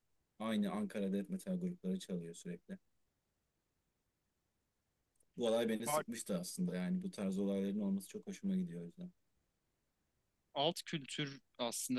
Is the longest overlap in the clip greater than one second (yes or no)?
no